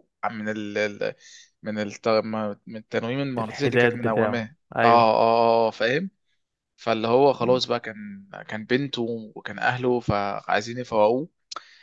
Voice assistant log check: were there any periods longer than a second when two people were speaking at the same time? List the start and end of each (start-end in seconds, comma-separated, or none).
3.4-5.1